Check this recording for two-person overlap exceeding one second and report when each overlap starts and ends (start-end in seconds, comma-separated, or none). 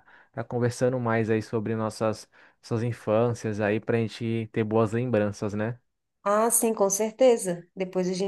none